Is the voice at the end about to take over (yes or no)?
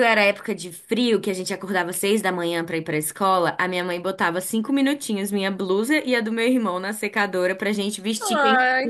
yes